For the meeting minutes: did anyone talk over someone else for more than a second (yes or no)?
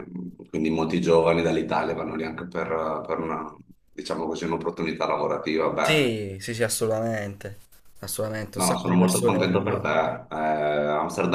yes